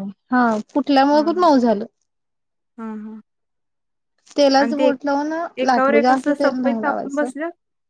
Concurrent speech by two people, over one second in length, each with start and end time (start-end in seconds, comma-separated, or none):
5.7-7.3